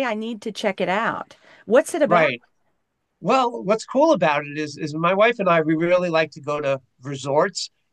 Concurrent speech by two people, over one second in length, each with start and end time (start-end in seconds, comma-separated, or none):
none